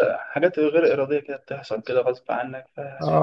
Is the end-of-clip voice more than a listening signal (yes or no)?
yes